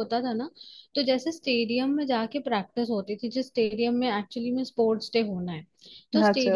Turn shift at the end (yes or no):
no